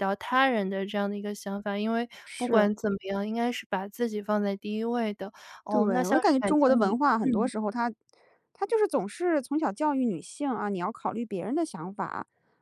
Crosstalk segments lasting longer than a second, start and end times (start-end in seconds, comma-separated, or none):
5.7-7.5